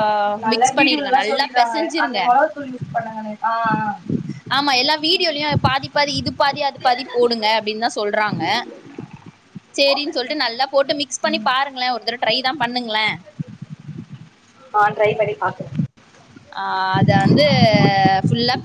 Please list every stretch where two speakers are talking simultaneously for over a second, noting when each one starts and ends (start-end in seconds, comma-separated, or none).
0.5-2.2